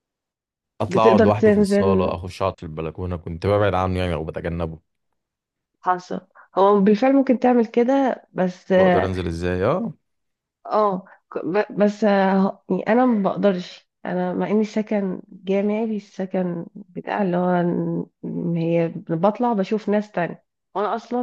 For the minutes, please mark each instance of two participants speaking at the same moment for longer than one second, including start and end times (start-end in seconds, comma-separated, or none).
0.9-2.1